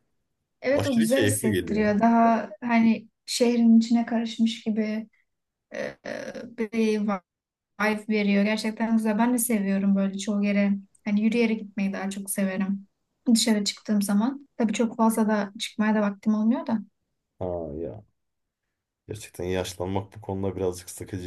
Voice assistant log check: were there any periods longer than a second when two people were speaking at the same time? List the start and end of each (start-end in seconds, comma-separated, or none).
0.7-2.0